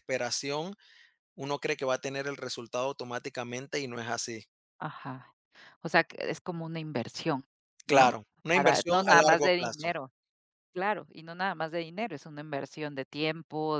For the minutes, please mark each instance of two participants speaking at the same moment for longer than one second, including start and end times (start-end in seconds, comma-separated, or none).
7.9-9.9